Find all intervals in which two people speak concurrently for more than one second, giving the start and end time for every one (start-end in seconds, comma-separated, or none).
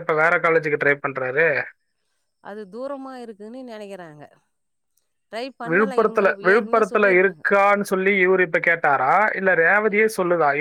5.7-7.5